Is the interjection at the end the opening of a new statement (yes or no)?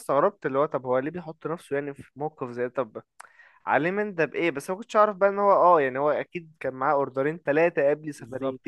no